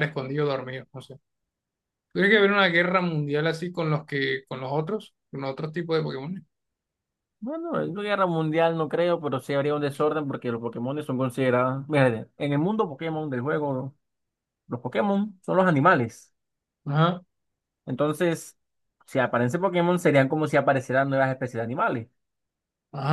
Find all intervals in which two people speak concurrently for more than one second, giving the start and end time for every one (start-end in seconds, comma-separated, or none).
none